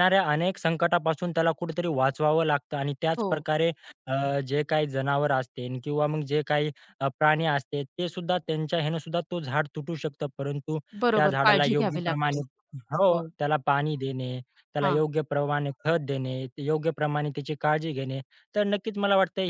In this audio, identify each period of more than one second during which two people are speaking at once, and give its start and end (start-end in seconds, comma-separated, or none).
11.1-12.4